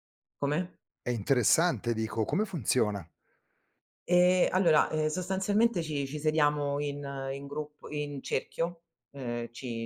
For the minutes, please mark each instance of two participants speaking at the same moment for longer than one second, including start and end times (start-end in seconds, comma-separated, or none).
none